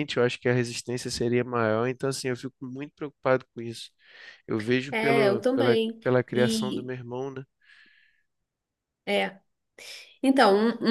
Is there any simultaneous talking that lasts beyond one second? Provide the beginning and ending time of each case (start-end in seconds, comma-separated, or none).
4.9-6.9